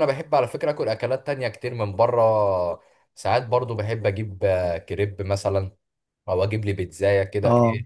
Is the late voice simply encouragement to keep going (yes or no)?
yes